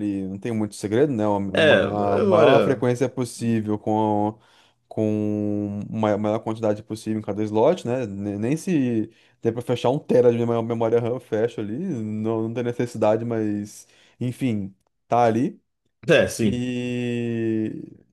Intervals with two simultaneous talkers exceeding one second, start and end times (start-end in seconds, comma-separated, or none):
1.5-2.8